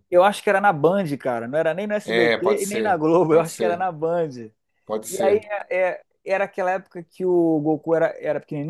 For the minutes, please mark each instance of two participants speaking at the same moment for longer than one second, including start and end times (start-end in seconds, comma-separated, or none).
2.0-3.8